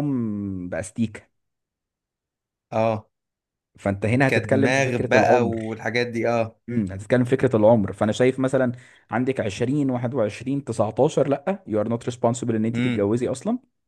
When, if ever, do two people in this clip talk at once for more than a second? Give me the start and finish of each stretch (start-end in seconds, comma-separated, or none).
4.3-5.8